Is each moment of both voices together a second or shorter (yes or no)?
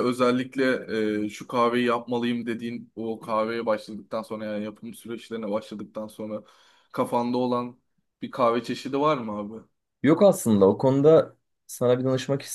yes